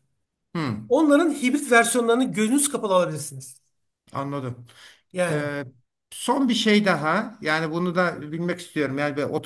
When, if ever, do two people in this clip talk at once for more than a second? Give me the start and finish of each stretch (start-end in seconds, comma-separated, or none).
none